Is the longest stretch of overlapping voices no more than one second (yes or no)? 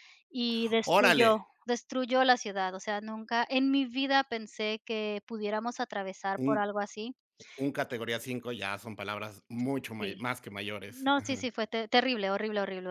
yes